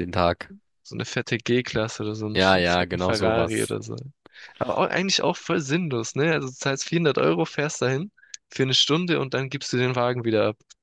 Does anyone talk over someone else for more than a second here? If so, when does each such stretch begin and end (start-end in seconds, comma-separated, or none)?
2.3-3.7